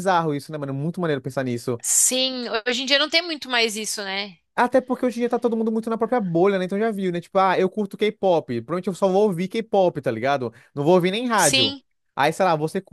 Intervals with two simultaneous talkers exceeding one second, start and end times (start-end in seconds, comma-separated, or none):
none